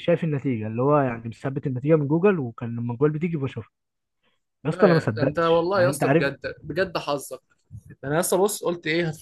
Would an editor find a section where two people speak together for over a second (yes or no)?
yes